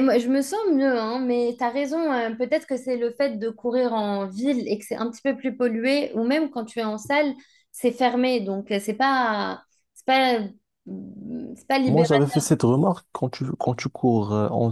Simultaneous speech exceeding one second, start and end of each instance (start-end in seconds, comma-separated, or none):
none